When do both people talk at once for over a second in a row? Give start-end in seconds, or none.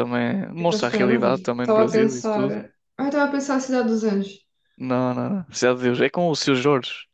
0.6-2.6